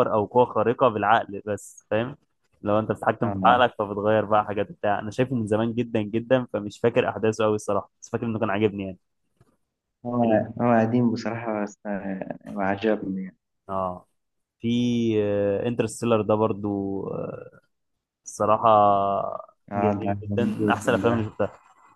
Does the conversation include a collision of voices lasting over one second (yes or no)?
yes